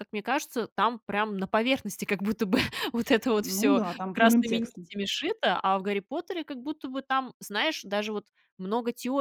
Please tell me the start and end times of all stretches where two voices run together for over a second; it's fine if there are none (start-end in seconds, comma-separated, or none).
3.4-4.9